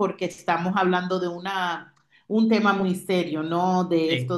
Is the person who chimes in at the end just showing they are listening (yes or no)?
yes